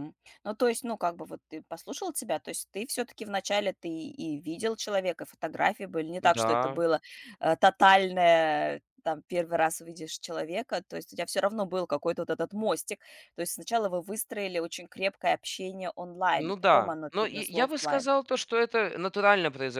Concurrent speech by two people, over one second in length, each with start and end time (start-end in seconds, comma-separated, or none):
16.4-18.1